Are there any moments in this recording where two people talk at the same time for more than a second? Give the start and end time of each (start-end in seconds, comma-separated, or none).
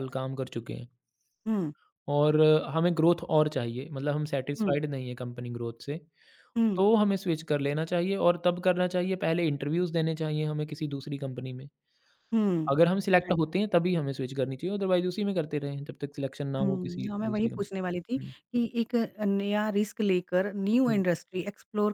16.6-18.3